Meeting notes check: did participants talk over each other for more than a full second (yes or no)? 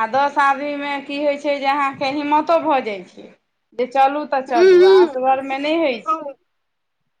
yes